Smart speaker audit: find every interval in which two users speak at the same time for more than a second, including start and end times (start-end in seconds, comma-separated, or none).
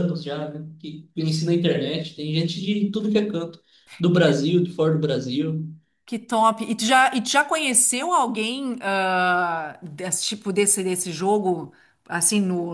none